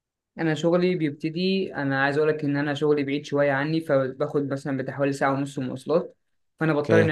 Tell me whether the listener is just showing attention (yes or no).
yes